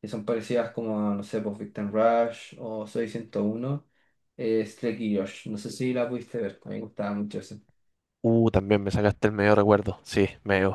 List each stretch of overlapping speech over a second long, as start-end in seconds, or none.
none